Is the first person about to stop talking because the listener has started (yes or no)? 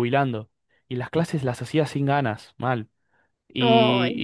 no